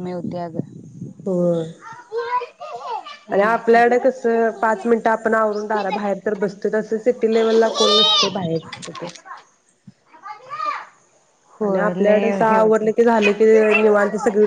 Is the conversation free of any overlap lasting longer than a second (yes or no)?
no